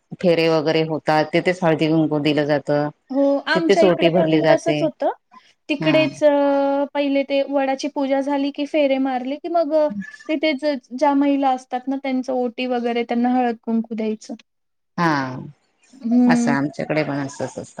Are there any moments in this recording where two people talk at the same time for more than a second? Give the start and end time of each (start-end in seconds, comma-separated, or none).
3.5-4.8